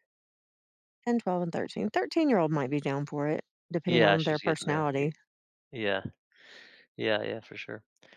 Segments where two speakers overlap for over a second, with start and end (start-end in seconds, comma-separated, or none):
3.9-5.1